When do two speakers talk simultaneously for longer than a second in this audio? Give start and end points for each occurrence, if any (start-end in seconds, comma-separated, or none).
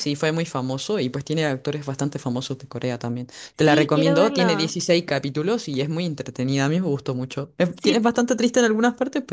3.5-4.7